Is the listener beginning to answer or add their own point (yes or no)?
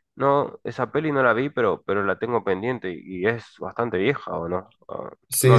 yes